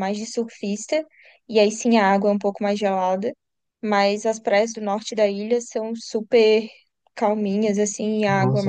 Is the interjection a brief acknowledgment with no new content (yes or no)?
no